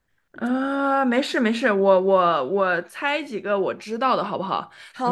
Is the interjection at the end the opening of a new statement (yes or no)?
yes